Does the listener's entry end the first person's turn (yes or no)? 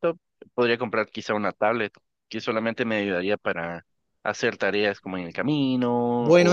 yes